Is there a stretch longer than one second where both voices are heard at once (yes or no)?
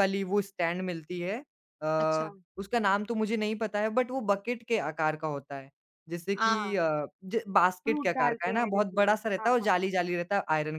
yes